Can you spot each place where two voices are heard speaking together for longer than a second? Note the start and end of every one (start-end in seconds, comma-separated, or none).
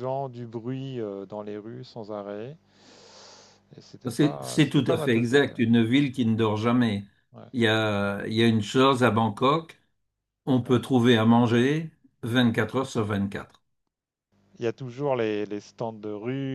4.1-5.6